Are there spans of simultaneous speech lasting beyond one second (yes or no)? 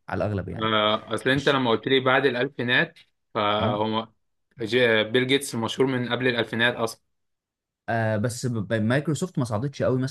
no